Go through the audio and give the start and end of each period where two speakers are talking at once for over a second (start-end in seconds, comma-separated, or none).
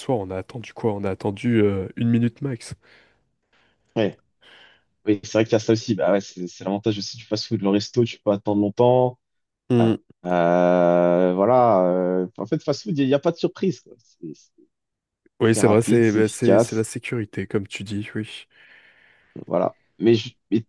15.4-16.9